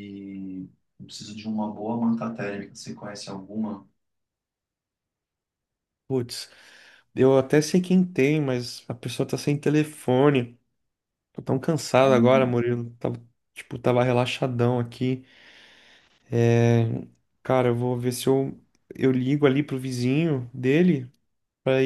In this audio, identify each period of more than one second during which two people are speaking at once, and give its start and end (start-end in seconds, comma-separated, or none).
none